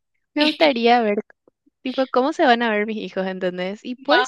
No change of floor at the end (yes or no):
no